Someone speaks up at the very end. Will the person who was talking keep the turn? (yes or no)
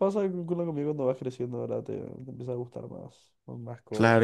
no